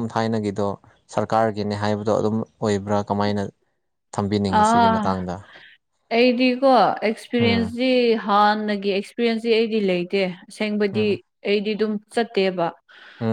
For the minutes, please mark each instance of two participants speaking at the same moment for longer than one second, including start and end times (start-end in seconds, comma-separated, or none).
none